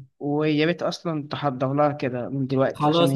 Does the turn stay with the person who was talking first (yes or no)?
no